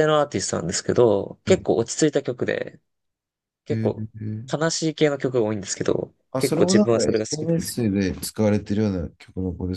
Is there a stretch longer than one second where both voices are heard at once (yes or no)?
yes